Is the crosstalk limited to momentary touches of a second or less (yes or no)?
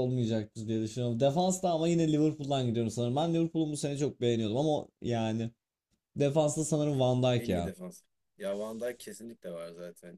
yes